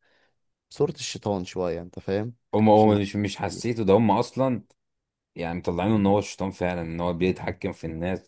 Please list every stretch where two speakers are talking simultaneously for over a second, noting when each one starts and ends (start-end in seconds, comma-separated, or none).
none